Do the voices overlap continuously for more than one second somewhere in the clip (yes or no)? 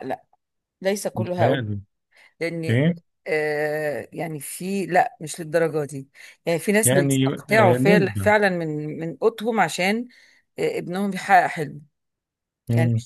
yes